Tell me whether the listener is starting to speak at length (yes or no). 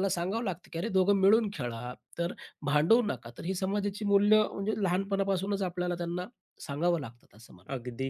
yes